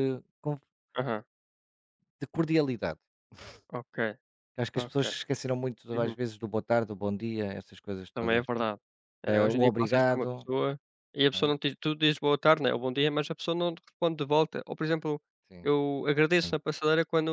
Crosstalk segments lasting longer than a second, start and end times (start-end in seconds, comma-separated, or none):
9.2-10.5